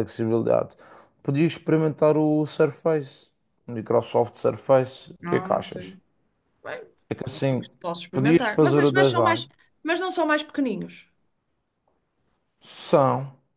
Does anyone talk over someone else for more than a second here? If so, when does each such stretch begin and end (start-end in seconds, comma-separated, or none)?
8.1-9.4